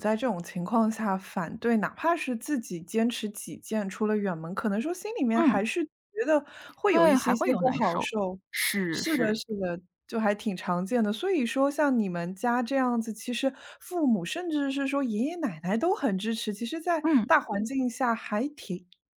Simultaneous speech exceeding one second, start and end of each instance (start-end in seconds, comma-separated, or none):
6.9-8.1